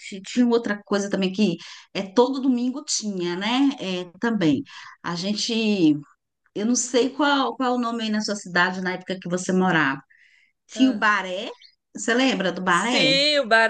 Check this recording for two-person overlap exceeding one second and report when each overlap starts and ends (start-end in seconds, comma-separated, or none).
none